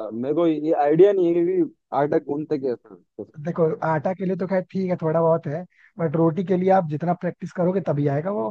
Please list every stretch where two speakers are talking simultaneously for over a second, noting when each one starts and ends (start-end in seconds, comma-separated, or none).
none